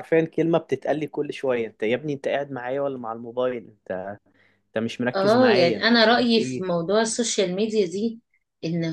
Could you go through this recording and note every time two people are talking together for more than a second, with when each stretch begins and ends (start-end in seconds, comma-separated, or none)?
5.1-6.7